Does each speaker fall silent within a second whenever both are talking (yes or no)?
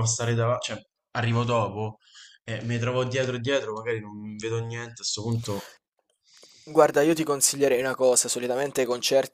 yes